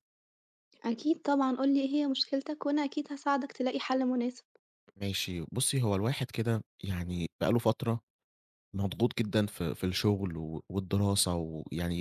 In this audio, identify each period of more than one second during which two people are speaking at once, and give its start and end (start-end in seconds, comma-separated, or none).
none